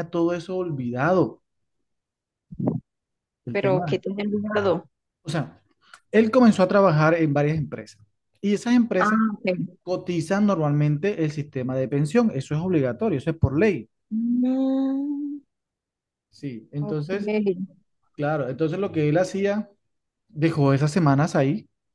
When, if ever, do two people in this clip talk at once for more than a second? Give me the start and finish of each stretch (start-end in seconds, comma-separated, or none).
none